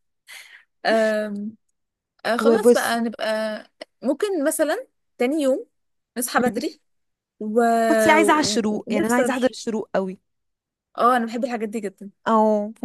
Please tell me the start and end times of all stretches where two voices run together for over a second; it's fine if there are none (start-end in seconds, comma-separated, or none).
8.2-9.6